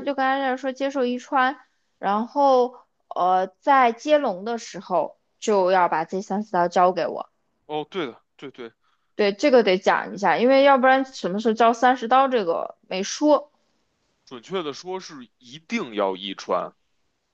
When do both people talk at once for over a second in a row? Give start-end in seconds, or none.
none